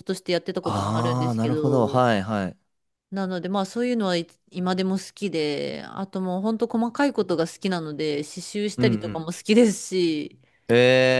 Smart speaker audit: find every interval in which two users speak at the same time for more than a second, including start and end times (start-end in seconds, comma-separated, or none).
0.6-2.0